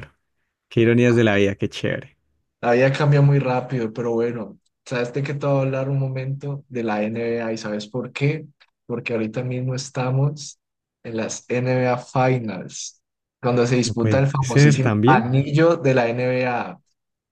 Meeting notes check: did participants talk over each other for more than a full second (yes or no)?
yes